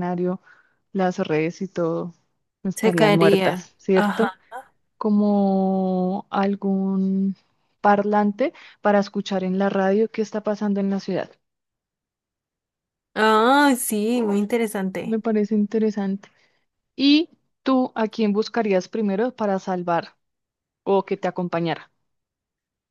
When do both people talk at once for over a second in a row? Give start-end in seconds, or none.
2.8-4.3